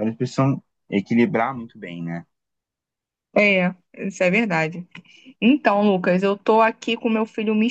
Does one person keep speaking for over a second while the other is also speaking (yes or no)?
no